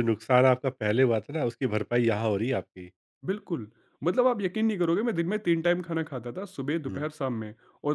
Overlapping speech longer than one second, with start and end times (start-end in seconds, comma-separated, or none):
none